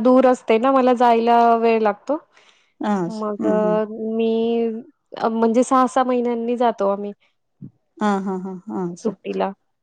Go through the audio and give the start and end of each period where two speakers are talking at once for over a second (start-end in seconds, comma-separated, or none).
none